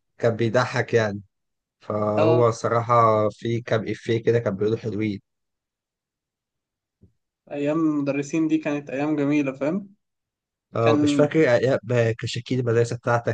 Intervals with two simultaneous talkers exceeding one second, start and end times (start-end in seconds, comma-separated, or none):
none